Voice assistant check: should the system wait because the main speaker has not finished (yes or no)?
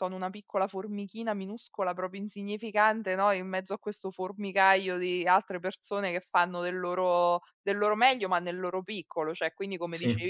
yes